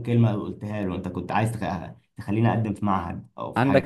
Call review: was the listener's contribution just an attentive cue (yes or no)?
no